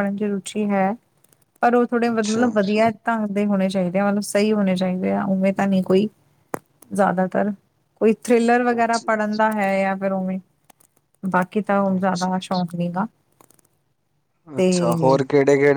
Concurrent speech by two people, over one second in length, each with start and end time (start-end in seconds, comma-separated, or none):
none